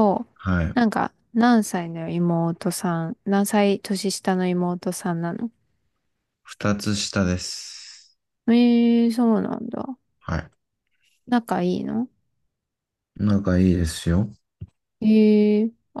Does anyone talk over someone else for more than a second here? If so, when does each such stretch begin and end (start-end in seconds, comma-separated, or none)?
none